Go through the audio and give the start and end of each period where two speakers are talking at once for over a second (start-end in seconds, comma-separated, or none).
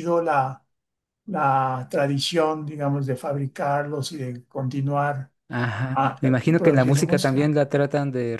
5.9-7.5